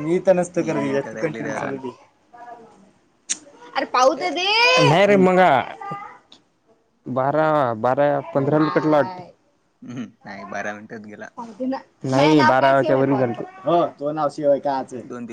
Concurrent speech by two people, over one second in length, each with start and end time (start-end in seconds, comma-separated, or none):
0.5-1.8